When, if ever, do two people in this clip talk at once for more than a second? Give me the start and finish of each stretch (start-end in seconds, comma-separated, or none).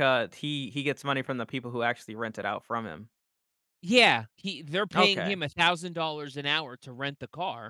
none